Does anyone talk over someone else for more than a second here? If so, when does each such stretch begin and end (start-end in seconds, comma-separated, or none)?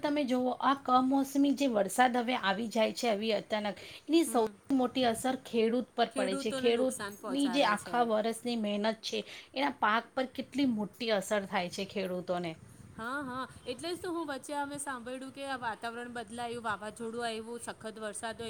6.2-8.0